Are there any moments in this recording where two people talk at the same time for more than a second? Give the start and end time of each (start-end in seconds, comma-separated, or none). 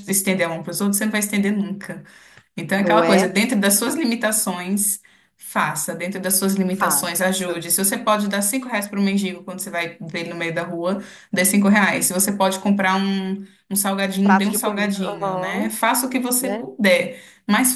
14.2-15.7